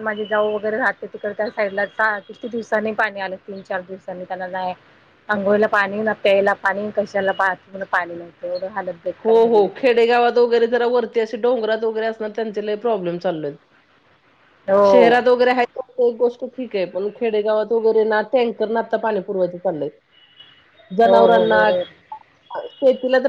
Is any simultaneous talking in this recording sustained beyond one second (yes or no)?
no